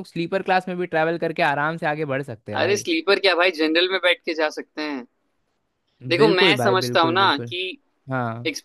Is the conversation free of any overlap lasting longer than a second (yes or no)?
no